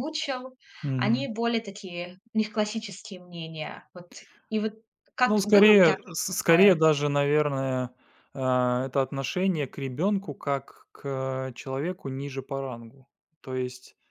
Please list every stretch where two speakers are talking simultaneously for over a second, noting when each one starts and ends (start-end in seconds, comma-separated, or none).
5.3-6.7